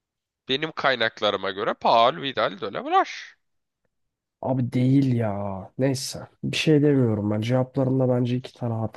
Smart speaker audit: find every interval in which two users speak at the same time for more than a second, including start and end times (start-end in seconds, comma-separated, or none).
none